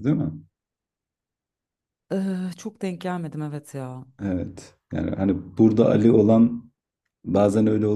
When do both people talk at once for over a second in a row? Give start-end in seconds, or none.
none